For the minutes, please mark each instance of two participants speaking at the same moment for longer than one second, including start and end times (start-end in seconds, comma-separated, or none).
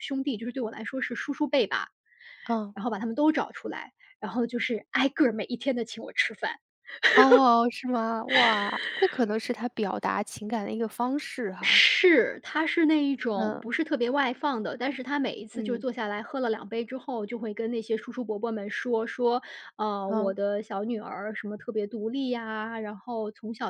none